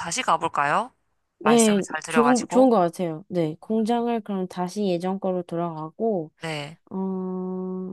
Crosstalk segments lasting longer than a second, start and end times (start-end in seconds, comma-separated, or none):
1.4-2.7